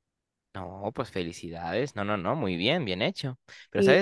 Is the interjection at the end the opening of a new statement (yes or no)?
no